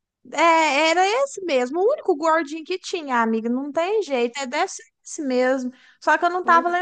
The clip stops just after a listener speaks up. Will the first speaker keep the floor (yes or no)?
yes